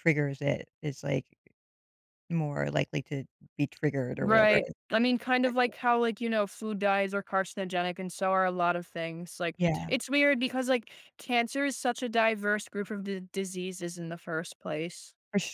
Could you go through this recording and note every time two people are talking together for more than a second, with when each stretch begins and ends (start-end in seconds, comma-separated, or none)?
none